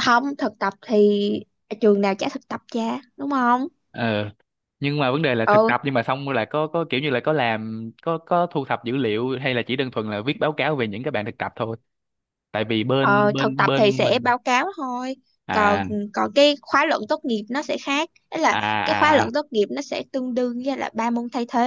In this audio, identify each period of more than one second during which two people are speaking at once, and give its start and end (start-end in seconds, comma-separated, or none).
13.0-14.3